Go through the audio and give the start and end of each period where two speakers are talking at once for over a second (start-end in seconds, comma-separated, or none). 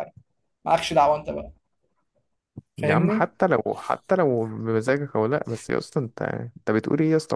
none